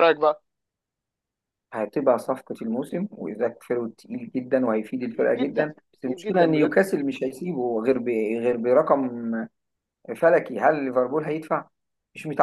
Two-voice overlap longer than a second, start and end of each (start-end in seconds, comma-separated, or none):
5.1-6.7